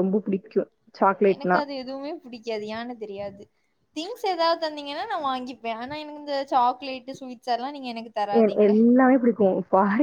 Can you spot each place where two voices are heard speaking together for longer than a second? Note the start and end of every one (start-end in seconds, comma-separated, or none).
none